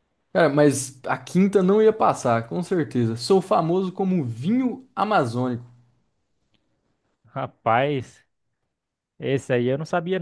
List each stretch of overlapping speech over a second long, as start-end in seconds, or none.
none